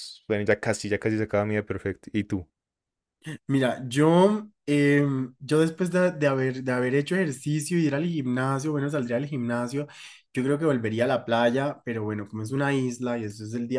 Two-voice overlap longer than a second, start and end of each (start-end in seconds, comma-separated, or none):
none